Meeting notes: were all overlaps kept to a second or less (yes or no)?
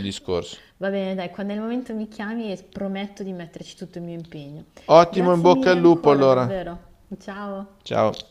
no